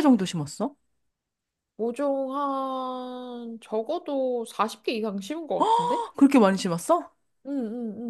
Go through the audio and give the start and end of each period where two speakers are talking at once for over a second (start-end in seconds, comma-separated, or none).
none